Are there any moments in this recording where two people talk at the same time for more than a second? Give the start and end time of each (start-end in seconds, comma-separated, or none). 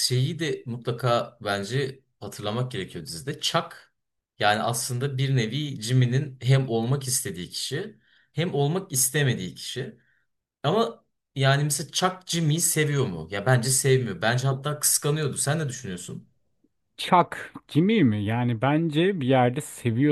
none